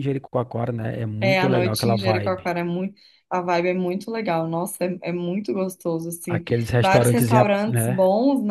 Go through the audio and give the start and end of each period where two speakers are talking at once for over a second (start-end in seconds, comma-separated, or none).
1.2-2.5, 6.3-8.0